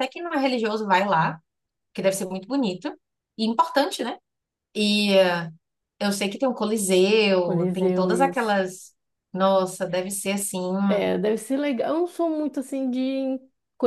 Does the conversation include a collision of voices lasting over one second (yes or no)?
yes